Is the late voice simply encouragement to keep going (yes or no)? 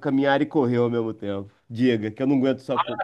no